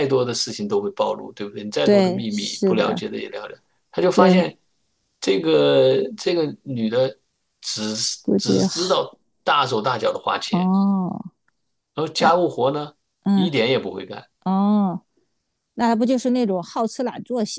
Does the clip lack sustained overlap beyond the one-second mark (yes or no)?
no